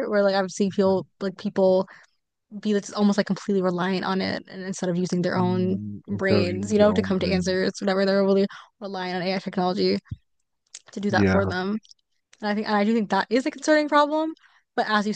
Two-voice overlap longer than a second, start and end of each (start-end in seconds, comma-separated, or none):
5.3-7.6